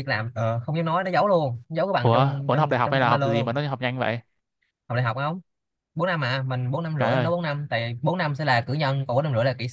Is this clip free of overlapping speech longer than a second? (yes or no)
no